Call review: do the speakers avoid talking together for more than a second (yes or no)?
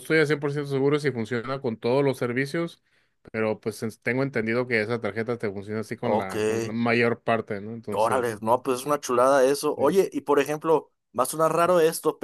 yes